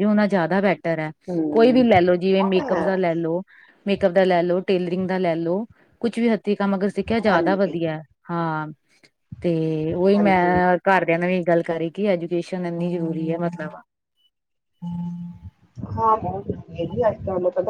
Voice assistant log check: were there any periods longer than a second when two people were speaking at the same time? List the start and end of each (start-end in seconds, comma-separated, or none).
1.5-2.8